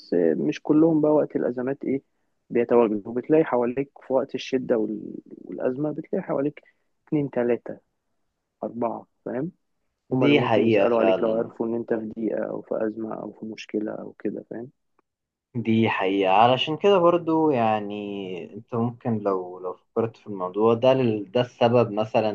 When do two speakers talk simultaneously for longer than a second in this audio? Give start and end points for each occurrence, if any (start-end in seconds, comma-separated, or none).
10.1-11.5